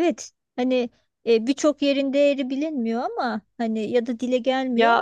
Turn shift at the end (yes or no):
yes